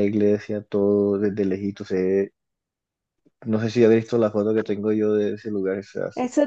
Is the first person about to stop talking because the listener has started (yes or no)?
yes